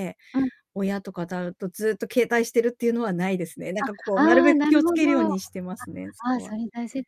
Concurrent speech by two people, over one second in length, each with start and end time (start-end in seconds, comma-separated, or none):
3.8-5.3